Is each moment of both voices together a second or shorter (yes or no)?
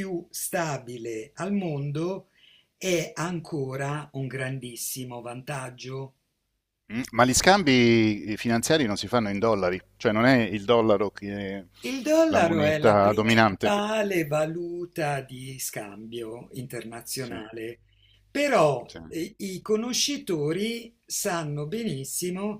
no